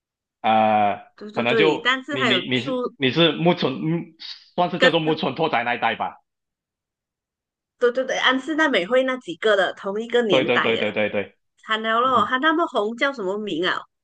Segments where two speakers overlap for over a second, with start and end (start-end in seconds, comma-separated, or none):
1.2-2.9